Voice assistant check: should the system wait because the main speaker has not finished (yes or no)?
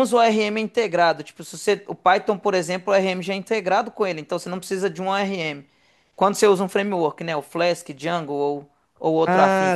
no